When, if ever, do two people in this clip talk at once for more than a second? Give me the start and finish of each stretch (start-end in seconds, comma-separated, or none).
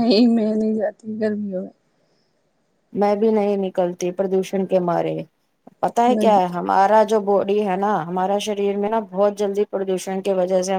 none